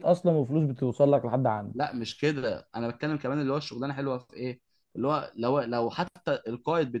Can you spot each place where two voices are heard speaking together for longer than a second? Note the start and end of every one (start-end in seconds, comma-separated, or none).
none